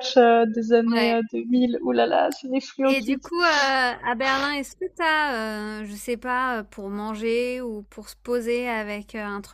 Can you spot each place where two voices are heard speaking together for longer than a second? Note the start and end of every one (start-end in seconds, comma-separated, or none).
none